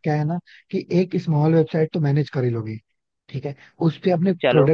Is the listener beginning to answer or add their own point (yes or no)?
no